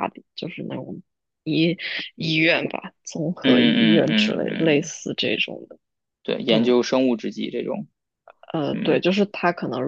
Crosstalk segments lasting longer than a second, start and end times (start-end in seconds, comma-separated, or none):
3.4-4.9